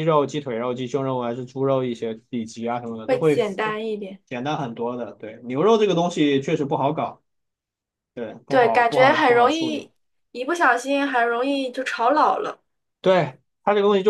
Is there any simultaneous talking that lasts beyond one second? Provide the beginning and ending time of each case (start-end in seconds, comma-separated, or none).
8.5-9.9